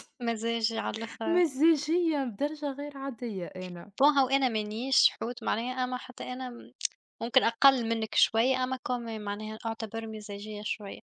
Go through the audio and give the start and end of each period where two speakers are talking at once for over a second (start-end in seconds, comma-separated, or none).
none